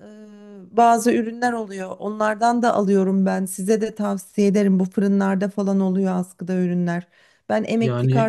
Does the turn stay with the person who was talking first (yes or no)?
yes